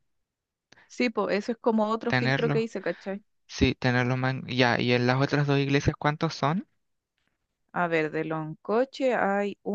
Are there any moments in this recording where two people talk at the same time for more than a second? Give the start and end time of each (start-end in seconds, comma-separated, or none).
none